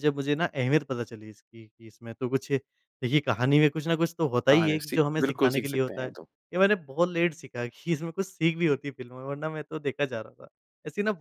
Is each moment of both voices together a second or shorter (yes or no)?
no